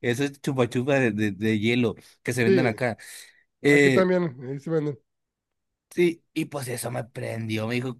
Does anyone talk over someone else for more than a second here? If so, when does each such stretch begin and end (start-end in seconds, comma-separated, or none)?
none